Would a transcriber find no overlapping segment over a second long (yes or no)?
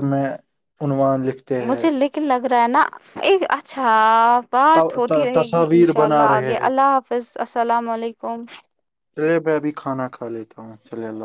no